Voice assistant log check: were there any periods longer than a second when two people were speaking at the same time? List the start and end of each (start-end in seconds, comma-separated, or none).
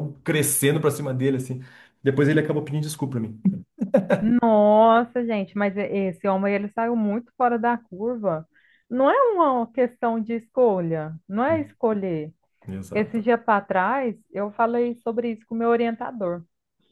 none